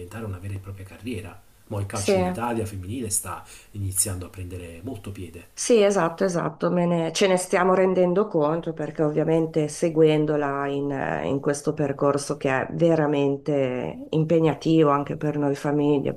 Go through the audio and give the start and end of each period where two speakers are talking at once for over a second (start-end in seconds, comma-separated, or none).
none